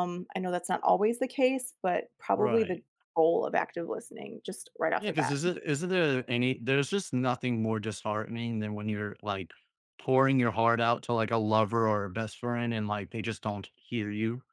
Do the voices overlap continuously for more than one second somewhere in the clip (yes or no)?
no